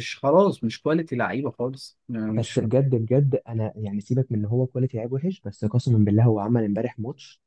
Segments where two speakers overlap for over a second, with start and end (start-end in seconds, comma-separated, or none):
none